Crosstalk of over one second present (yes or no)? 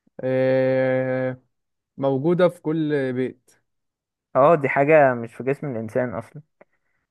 no